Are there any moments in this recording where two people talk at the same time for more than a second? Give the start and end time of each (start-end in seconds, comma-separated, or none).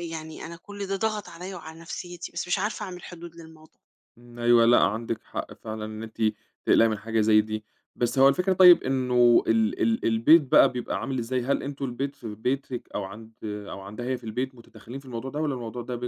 none